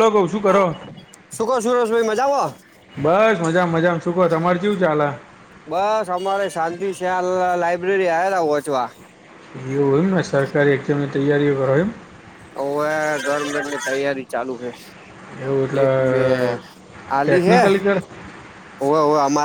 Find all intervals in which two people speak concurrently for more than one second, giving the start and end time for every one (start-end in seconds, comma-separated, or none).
none